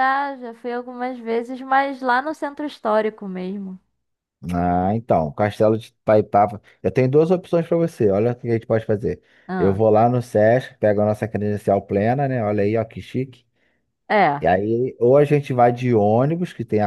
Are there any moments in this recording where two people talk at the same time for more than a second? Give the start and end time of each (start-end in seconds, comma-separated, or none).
none